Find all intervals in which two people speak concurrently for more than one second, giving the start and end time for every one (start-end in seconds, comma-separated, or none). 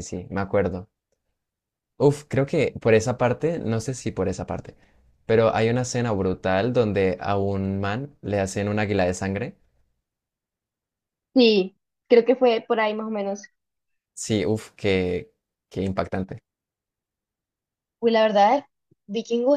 none